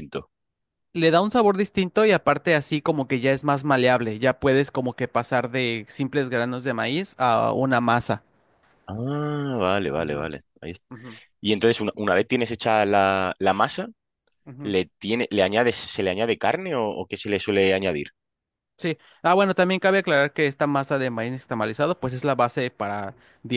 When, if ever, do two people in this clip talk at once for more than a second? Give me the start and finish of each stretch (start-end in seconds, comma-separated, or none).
none